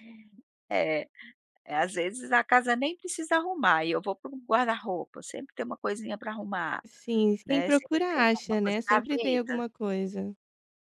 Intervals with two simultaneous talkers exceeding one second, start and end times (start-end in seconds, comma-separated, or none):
7.5-9.6